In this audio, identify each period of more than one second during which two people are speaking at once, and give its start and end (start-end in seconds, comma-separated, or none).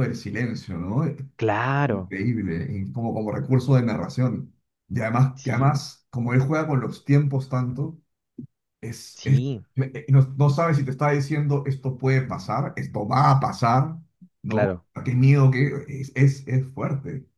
none